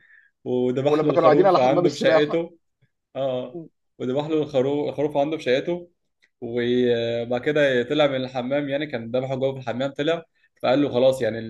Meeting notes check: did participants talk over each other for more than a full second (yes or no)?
yes